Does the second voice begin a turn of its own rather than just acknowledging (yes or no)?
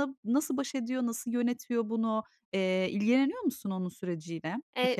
yes